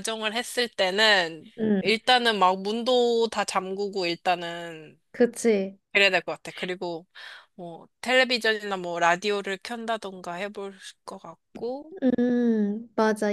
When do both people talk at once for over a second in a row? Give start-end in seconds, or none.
none